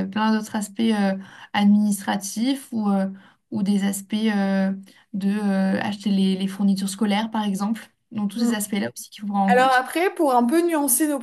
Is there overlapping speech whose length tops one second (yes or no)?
no